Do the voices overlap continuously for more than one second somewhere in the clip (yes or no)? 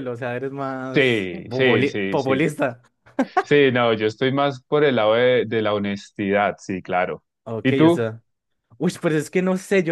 yes